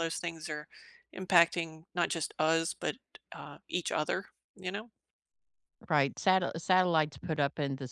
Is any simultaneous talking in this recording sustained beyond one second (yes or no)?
no